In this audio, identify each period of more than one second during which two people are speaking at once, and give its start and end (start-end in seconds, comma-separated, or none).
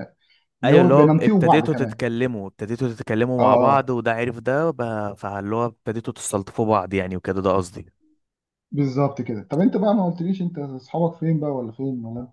0.6-2.0